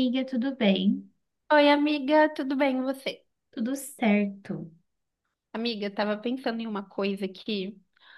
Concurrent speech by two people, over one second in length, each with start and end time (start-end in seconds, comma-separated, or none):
none